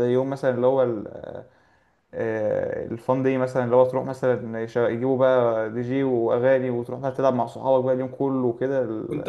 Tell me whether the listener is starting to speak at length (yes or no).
yes